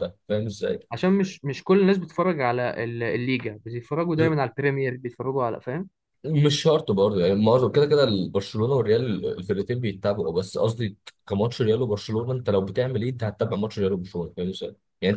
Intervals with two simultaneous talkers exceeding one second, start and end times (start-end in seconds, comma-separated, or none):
none